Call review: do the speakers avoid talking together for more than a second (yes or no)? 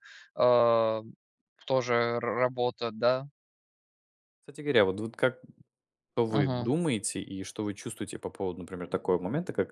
yes